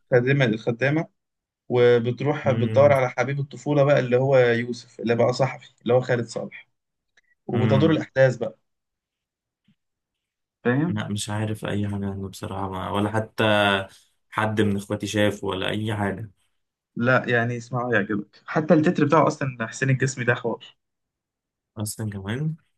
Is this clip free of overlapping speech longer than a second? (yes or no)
yes